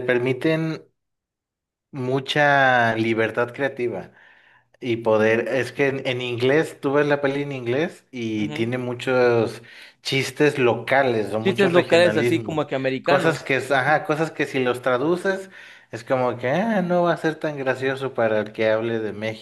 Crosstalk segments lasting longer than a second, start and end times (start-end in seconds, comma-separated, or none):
11.4-14.0